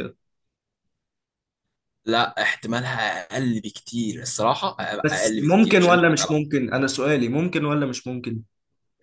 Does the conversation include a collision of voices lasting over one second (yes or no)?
yes